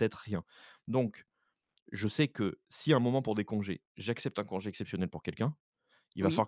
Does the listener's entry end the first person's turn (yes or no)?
no